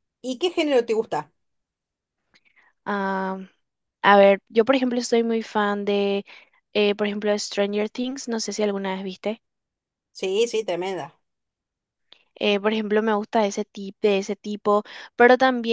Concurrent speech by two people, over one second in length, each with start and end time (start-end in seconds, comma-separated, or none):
none